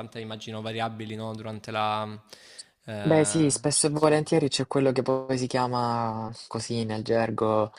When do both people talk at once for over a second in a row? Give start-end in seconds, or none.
3.0-4.3